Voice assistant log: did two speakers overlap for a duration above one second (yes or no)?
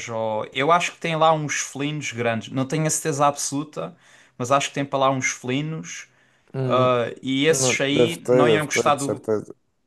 yes